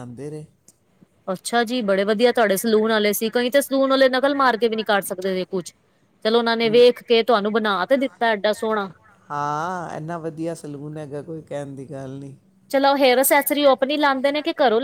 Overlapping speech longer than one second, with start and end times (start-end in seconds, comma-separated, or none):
none